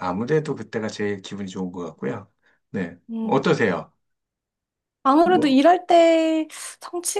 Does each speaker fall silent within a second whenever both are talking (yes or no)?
yes